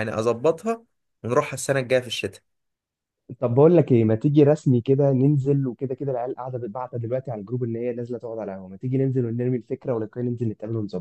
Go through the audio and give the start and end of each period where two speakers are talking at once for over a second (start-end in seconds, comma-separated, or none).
none